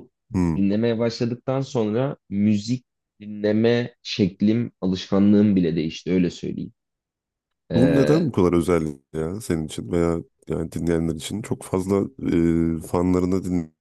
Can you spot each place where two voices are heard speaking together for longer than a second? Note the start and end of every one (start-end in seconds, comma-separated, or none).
none